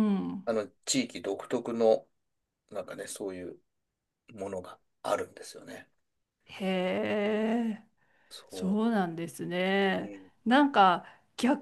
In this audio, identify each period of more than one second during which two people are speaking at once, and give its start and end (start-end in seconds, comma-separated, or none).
none